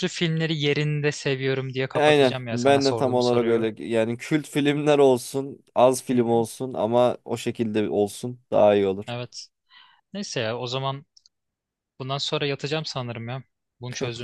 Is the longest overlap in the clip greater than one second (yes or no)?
yes